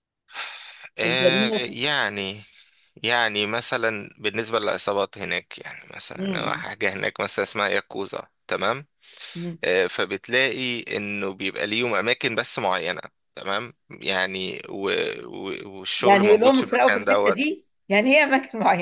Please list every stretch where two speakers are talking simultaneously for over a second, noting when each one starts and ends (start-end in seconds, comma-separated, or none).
16.0-17.4